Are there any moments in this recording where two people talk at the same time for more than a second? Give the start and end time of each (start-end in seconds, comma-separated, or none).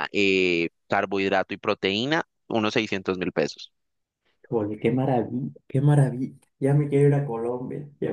none